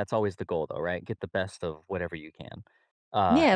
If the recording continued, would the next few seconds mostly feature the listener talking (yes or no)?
yes